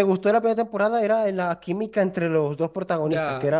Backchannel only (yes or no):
no